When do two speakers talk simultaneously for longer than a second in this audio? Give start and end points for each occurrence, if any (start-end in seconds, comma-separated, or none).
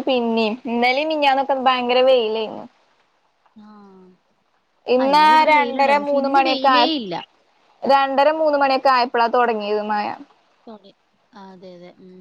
5.0-6.8